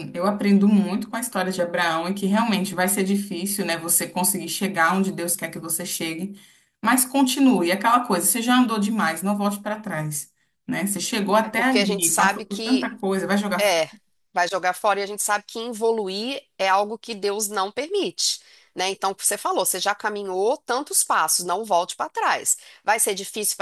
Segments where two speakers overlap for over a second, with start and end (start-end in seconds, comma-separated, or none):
11.4-12.9